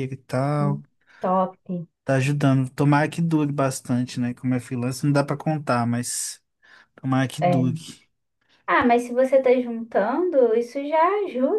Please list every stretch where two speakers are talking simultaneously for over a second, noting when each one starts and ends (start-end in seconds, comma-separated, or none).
none